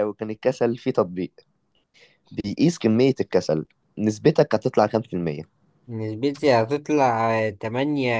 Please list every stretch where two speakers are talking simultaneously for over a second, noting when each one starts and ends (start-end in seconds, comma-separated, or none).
none